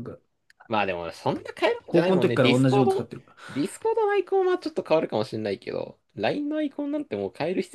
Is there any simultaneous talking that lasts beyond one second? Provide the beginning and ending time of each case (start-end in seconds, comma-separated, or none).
1.9-3.1